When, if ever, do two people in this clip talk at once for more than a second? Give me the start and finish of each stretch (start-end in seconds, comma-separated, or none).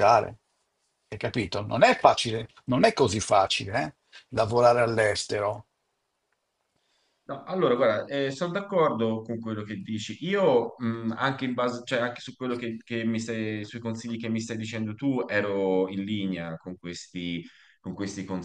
none